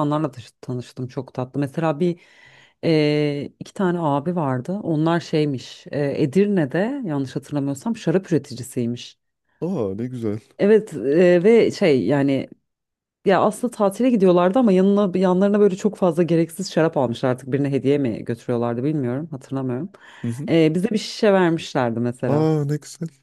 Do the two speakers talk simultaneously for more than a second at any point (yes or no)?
no